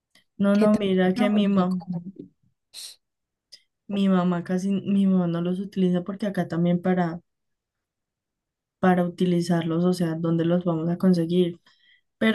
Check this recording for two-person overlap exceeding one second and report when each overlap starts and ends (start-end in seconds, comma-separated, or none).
0.5-1.8